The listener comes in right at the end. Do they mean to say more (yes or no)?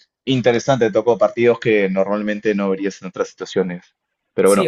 yes